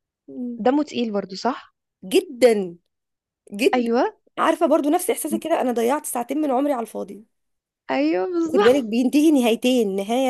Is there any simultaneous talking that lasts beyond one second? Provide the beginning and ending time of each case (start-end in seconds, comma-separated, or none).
none